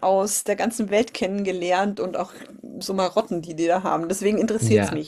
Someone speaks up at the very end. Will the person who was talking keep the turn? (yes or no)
no